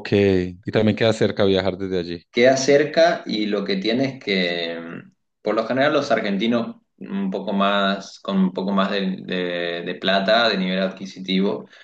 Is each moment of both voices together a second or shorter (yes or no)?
yes